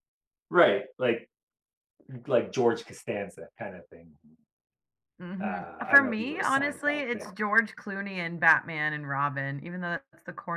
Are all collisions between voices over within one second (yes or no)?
no